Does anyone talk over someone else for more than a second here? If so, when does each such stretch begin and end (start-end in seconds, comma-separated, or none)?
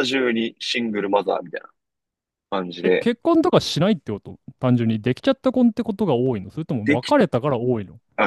none